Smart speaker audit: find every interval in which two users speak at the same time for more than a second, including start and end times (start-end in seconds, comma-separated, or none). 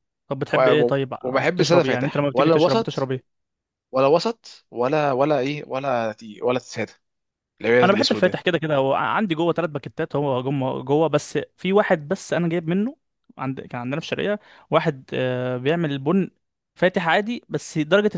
0.5-3.1